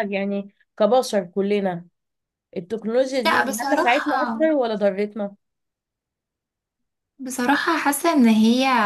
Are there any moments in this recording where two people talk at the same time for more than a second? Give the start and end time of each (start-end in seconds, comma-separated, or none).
3.3-4.5